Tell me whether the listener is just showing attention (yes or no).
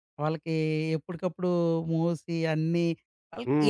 no